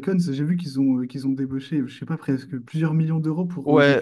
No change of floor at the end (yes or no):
no